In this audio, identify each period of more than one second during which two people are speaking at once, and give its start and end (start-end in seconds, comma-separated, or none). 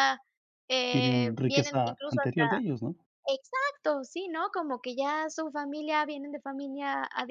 0.9-2.4